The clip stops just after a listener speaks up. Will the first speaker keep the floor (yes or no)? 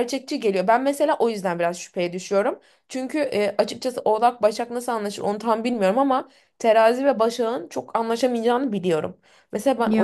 yes